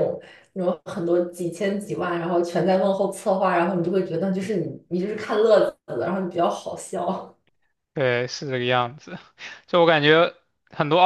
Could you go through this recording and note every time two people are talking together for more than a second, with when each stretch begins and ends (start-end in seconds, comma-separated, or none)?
none